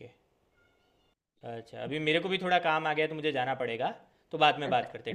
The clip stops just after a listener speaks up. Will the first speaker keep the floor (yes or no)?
no